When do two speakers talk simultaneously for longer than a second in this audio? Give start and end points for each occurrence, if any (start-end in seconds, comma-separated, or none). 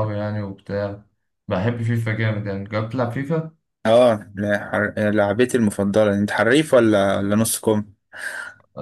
none